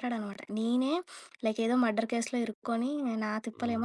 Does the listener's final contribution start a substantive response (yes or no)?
no